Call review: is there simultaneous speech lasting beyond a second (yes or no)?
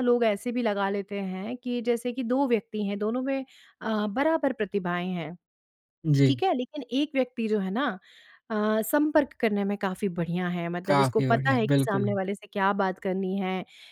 yes